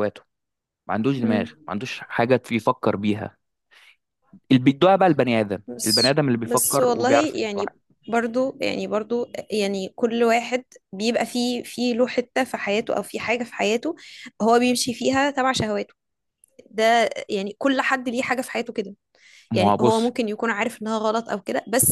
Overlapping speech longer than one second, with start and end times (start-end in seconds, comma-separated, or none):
5.7-7.7